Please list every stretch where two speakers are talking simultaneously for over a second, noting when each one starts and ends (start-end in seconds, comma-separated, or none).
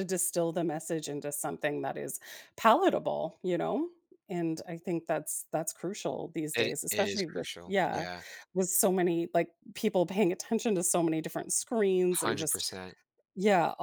6.5-8.1